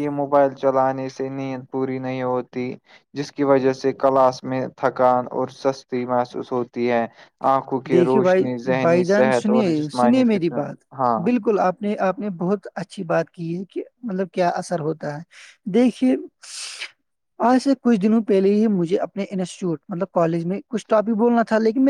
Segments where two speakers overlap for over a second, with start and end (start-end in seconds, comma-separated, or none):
7.9-9.9